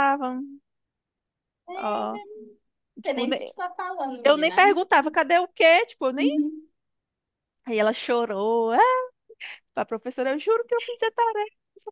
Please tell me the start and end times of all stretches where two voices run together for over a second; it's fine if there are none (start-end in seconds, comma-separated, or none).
none